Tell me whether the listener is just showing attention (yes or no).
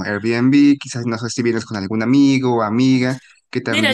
no